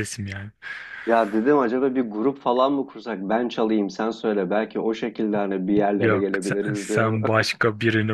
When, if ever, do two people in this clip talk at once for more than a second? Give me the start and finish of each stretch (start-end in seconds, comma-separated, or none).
6.0-7.3